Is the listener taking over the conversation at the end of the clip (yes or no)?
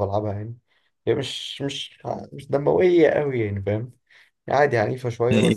yes